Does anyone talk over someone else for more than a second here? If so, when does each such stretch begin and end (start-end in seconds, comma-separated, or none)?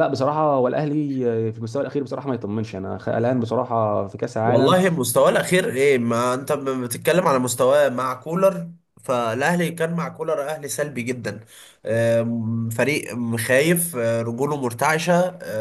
none